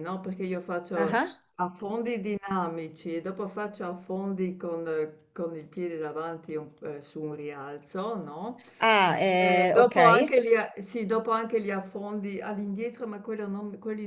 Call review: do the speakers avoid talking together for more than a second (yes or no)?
yes